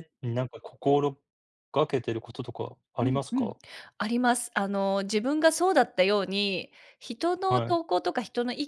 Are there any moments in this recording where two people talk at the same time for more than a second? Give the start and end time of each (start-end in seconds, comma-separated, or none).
none